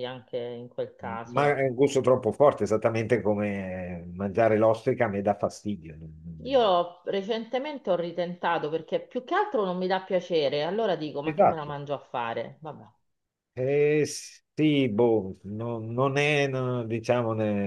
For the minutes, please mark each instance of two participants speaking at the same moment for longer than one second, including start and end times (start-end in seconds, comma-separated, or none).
none